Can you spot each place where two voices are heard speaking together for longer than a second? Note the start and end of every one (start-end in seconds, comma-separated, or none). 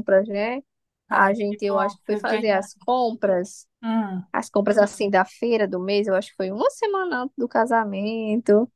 1.1-2.7